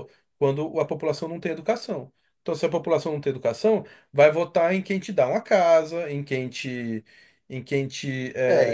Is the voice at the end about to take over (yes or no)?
yes